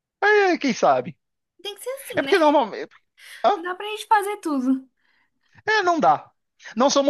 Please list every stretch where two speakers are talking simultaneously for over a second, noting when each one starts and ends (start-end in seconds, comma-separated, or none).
none